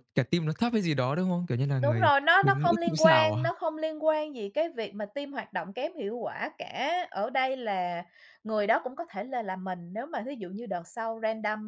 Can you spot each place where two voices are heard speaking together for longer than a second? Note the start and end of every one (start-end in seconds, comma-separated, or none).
1.8-3.4